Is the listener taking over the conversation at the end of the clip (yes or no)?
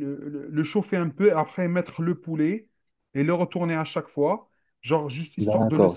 yes